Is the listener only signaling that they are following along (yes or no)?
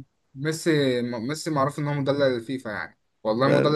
yes